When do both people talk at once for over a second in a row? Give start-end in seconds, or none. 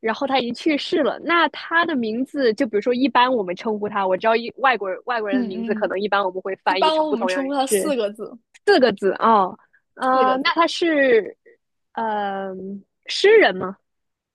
6.6-7.9